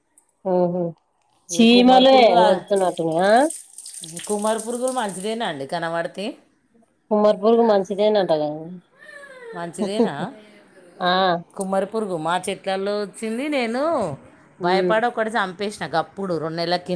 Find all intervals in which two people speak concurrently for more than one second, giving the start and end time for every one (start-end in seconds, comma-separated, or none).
none